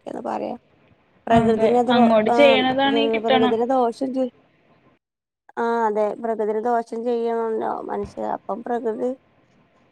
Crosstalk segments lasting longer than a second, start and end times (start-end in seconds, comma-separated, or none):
1.4-3.5